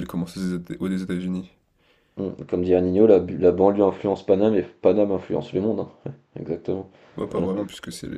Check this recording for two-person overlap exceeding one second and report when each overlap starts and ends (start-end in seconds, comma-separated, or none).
none